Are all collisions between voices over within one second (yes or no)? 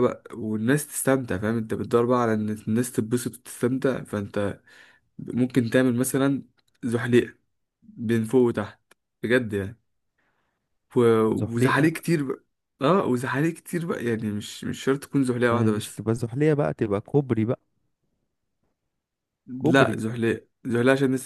yes